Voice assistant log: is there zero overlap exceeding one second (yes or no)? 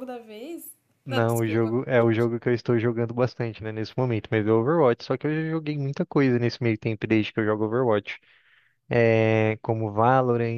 no